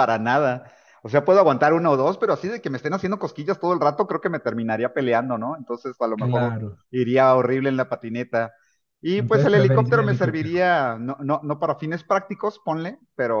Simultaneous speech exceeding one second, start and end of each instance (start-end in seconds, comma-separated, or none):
9.2-10.7